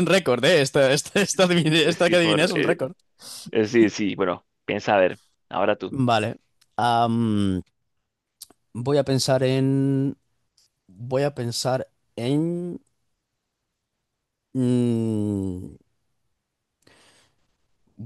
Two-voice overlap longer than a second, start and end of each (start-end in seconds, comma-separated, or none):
1.3-2.9